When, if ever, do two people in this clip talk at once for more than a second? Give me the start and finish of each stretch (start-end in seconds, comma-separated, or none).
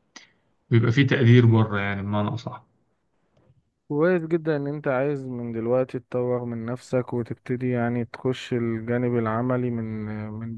none